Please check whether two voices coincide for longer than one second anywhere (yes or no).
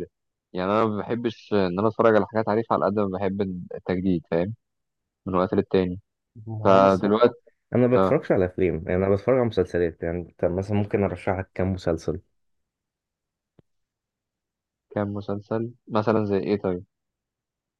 no